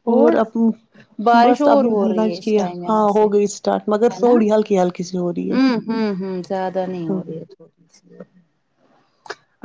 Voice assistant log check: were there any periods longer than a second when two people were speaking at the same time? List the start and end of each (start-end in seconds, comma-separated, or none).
1.2-3.2